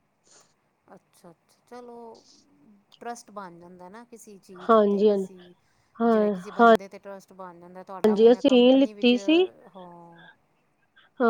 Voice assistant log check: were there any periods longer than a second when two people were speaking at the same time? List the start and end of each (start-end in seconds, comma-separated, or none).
7.9-9.1